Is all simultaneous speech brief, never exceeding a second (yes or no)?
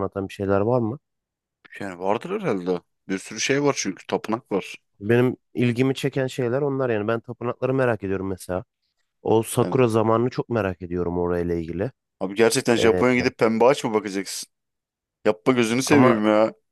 yes